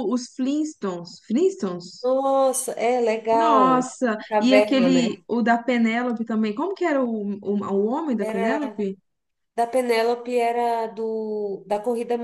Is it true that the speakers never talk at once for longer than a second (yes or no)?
no